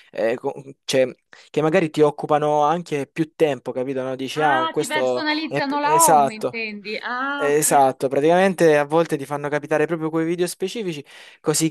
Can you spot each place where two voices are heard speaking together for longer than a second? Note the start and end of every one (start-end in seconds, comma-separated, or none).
4.4-6.6